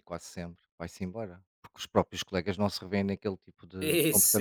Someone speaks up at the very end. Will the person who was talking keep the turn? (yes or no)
no